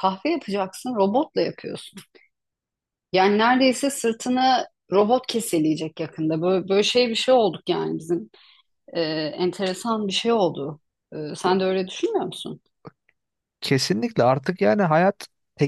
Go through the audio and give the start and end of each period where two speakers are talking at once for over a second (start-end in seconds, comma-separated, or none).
none